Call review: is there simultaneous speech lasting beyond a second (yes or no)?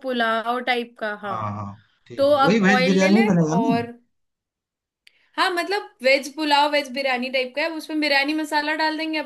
yes